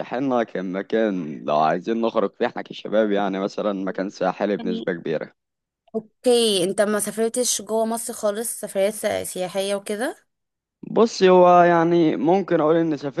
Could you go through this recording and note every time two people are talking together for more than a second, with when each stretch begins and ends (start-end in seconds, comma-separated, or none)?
none